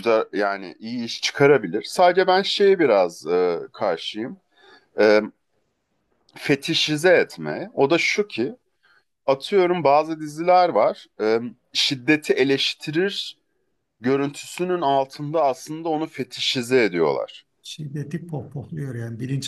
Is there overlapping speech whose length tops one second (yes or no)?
no